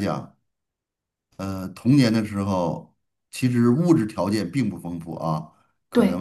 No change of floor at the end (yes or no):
yes